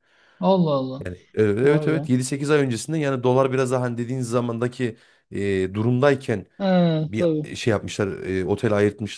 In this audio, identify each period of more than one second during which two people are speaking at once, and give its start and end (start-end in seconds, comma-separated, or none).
none